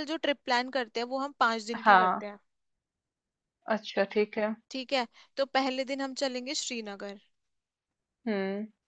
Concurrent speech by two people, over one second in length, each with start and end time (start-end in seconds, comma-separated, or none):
none